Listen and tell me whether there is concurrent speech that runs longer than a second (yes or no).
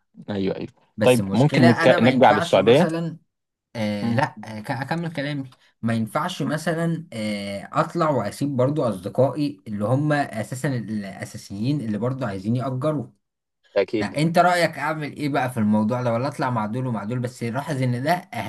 yes